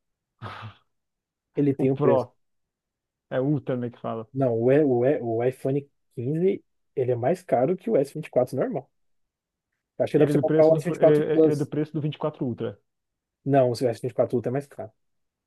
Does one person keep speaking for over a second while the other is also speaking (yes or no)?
yes